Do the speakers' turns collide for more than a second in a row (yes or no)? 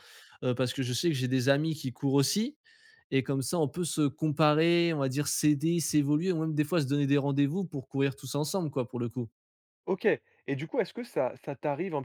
no